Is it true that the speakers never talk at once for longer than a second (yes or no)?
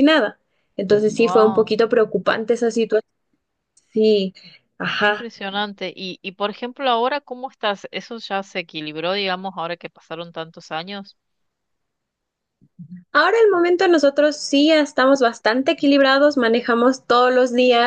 yes